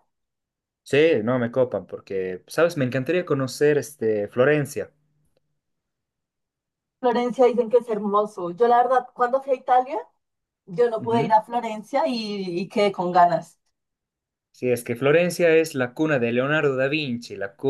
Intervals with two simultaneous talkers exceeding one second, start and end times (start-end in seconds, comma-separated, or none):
none